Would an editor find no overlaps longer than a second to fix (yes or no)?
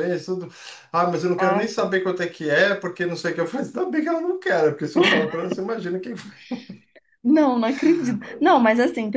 yes